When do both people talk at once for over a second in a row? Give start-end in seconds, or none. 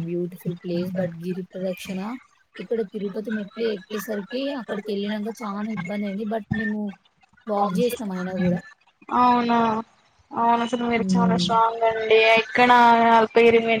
none